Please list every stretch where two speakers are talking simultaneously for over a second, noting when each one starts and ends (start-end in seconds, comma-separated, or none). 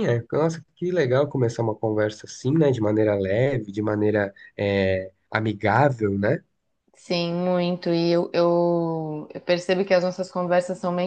none